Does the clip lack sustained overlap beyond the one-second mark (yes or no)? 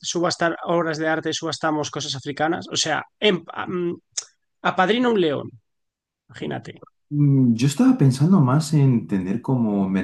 yes